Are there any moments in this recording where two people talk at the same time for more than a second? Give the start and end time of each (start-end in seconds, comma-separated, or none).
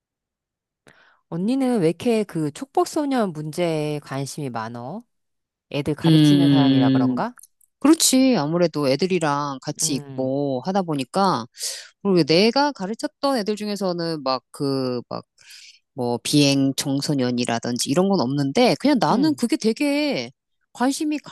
6.0-7.3